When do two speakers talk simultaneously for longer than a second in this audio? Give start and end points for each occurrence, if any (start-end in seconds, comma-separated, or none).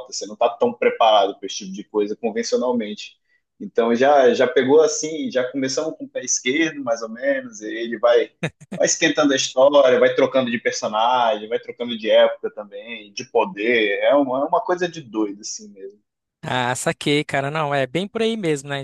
none